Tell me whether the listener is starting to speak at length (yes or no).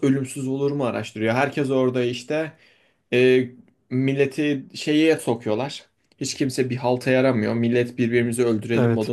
no